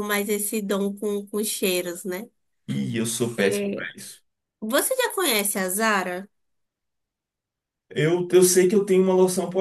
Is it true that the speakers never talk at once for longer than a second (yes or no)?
yes